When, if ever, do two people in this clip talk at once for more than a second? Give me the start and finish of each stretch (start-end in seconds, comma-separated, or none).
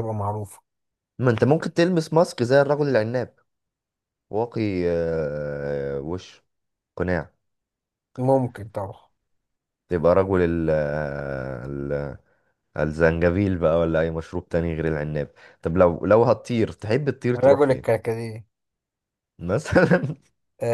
none